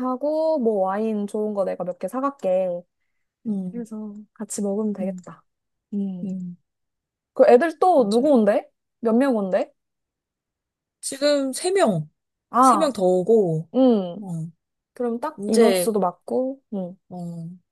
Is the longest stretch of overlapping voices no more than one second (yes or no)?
yes